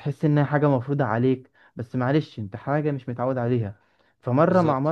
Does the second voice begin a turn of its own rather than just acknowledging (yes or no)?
no